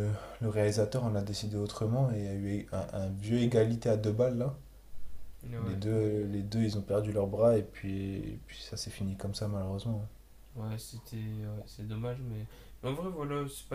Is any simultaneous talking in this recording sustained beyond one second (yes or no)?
no